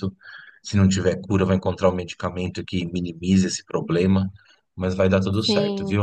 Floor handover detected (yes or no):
yes